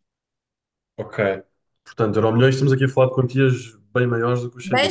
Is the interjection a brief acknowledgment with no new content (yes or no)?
no